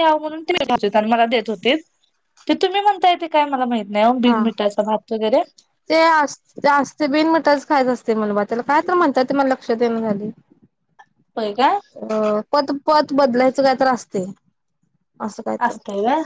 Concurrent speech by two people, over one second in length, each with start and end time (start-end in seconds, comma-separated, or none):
none